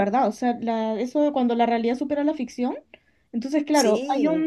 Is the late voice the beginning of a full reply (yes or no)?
no